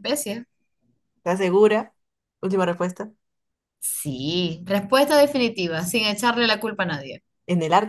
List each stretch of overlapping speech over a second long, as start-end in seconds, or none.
none